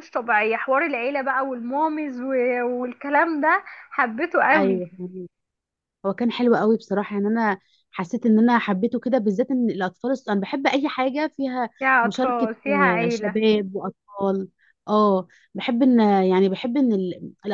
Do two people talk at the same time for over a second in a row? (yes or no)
yes